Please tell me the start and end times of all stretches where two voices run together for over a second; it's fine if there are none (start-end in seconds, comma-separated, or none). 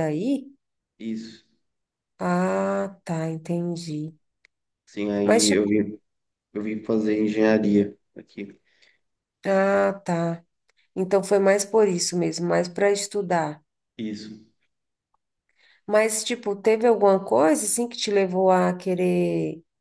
none